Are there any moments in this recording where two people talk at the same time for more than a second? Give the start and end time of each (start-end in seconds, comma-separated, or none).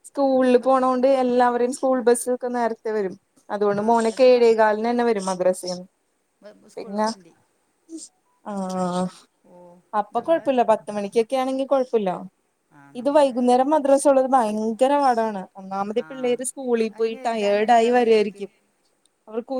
17.0-18.4